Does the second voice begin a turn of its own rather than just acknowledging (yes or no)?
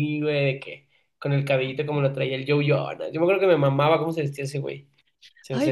yes